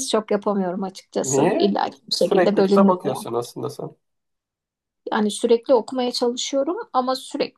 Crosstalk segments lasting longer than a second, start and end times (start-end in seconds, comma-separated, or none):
1.2-3.2